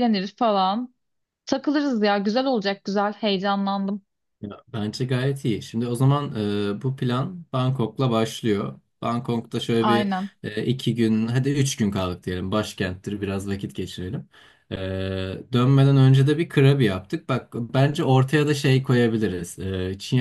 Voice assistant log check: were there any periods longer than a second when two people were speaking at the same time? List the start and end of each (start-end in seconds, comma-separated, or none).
none